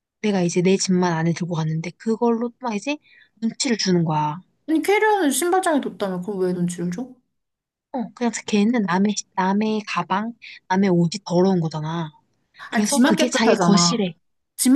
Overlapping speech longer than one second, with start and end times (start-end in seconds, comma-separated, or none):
12.7-14.1